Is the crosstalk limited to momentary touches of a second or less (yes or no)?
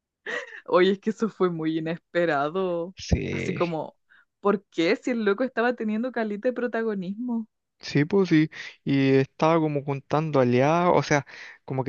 yes